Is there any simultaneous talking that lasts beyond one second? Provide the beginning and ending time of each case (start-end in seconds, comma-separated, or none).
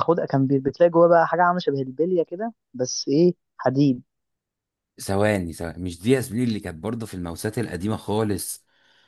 none